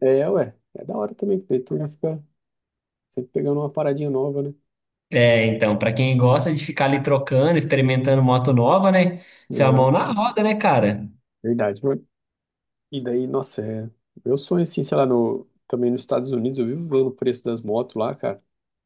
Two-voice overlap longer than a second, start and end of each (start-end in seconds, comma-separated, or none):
none